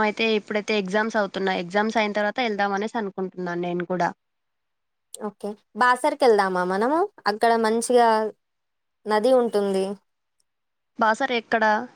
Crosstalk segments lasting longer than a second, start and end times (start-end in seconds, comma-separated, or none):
none